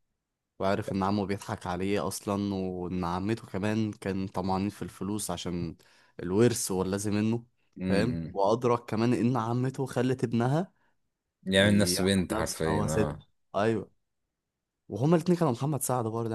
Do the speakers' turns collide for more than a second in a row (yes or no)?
yes